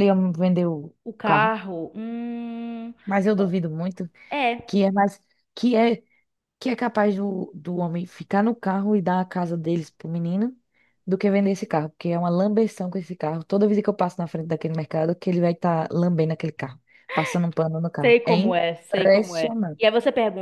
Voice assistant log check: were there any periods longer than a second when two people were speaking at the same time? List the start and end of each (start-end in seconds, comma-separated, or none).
18.0-19.8